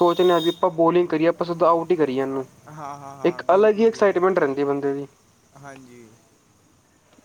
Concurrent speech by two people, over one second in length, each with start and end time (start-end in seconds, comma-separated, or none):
3.3-4.5